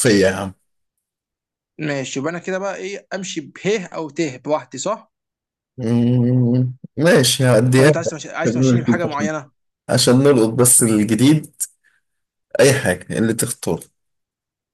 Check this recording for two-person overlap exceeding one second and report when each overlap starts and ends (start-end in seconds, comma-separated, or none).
7.8-9.3